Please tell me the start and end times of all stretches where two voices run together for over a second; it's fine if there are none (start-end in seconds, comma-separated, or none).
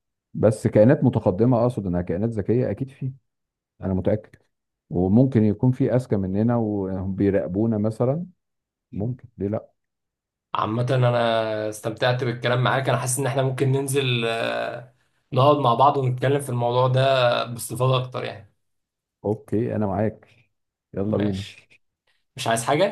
none